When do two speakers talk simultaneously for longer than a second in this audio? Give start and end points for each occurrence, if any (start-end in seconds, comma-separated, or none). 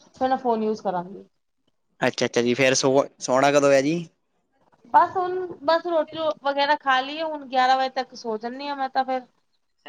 none